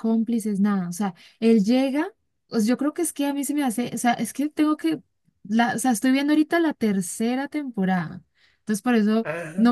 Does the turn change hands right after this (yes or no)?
no